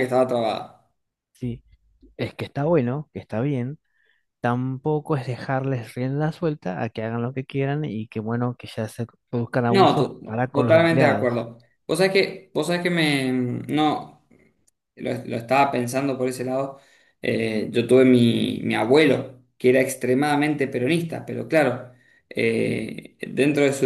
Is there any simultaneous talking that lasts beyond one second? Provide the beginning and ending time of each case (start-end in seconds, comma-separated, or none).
9.7-11.4